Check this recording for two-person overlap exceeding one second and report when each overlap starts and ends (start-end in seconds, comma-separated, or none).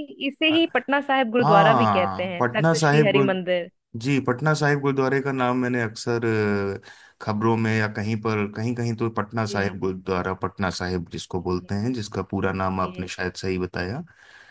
1.4-3.7